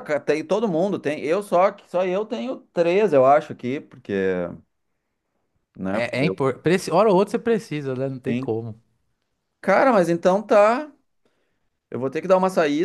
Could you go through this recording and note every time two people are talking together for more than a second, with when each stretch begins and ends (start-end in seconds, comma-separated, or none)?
none